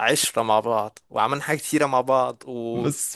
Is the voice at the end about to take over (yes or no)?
yes